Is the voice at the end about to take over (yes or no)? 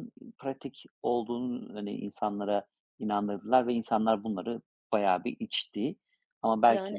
no